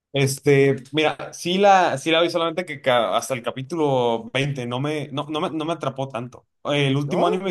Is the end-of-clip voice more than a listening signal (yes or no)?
no